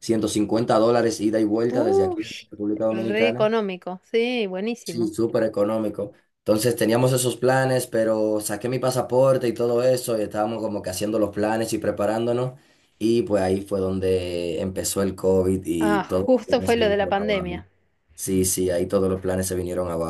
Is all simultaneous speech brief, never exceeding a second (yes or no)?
no